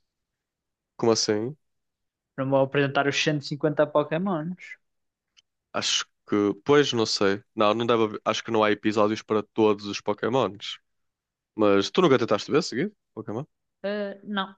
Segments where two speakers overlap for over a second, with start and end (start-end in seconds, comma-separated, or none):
none